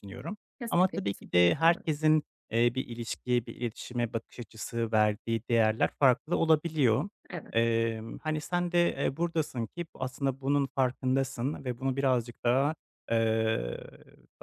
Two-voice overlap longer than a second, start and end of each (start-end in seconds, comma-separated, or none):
0.6-1.9